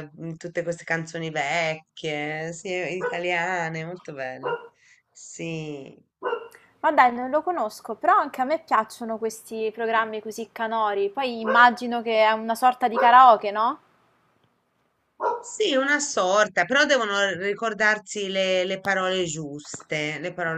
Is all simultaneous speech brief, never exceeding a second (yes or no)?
yes